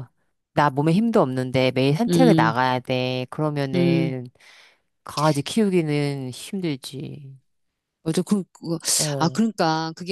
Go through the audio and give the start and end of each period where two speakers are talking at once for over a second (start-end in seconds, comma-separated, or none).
none